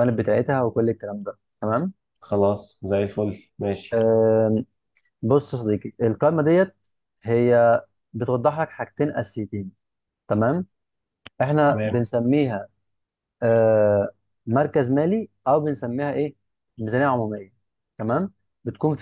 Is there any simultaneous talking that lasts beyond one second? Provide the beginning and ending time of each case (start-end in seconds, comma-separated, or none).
none